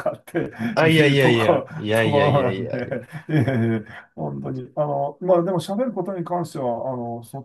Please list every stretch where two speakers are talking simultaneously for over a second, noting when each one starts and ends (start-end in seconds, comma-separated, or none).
0.8-3.1